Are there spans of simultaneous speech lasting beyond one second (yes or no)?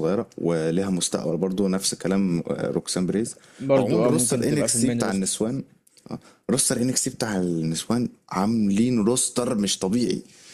yes